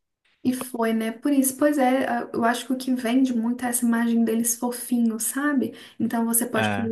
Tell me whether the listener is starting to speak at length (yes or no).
no